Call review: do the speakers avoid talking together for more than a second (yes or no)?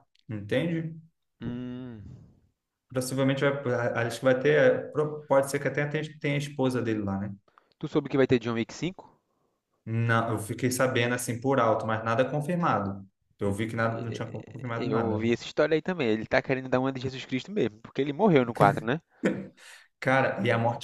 no